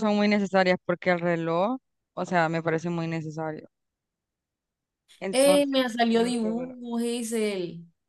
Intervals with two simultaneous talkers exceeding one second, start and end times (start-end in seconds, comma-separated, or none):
5.3-6.8